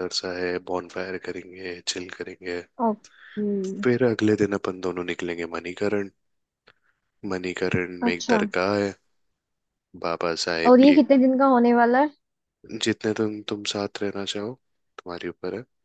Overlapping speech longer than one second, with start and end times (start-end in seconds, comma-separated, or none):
none